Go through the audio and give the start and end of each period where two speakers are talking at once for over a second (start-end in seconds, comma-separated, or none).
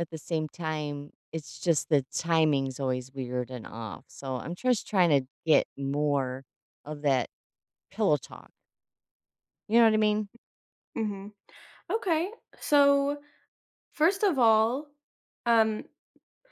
none